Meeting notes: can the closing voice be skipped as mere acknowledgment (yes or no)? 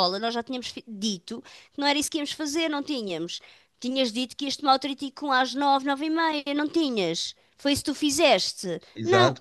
no